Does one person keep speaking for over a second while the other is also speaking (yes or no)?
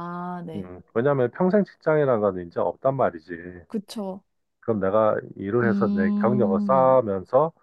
yes